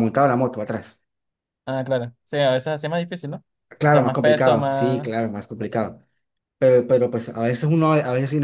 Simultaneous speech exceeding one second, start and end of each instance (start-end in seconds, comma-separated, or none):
3.8-5.1